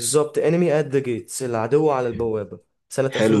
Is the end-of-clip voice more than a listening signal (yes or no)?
yes